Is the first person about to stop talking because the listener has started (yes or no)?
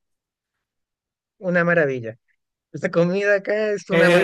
yes